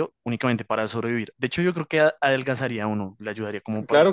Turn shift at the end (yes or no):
yes